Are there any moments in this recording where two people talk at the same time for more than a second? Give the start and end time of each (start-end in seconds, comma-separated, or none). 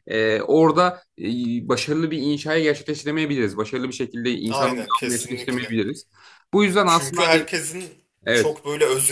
4.5-5.8